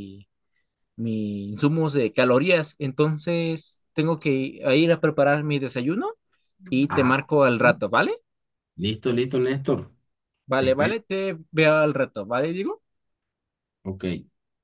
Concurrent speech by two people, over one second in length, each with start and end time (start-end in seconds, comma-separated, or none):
none